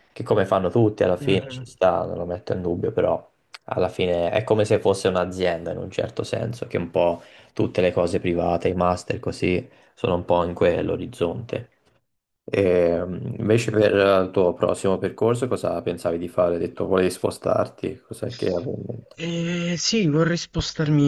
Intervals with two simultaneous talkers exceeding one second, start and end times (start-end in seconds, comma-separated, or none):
none